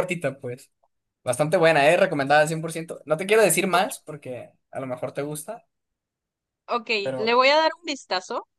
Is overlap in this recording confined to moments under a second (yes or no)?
yes